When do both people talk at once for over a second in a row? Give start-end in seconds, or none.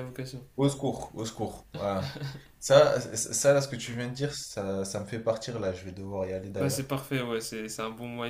none